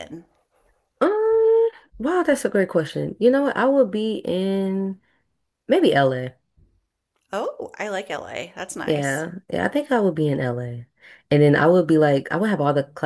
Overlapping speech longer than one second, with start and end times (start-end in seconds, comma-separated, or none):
none